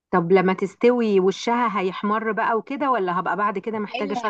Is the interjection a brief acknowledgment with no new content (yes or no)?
no